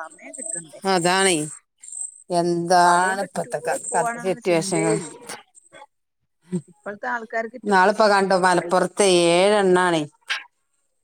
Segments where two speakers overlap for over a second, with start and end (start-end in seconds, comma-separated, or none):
2.8-5.0